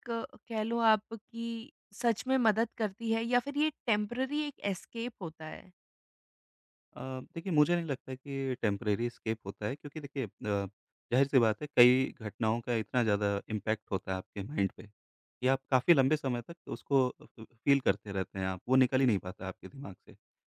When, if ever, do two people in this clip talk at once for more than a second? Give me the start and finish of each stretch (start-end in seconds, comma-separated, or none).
none